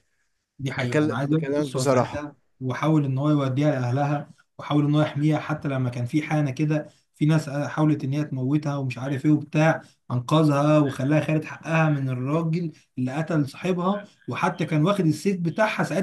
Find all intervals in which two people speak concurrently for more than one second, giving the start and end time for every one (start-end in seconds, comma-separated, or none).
0.8-2.3